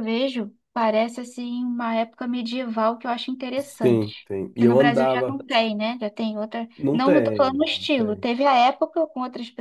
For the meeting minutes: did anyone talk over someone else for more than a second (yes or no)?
yes